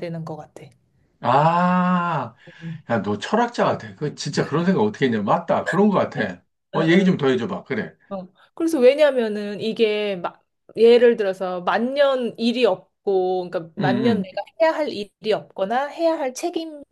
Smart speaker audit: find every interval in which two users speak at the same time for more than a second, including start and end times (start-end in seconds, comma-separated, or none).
none